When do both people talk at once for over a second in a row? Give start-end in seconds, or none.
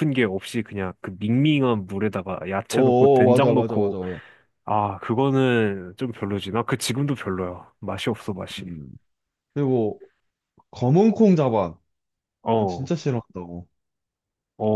2.7-4.0